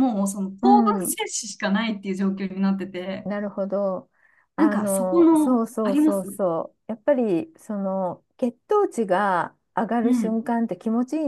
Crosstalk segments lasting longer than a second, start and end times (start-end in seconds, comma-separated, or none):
4.6-6.4